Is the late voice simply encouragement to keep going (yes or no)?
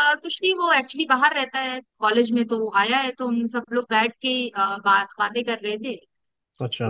yes